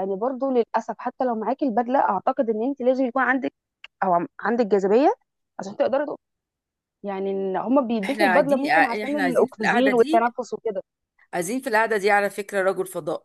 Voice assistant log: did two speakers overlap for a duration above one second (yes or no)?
yes